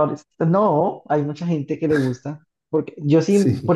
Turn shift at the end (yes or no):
no